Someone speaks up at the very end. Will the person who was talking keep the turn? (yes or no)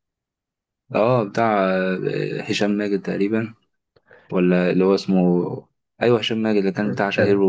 yes